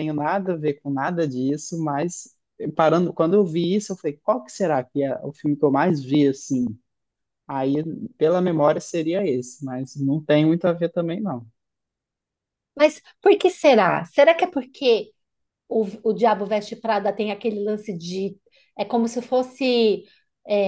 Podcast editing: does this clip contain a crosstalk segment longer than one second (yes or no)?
no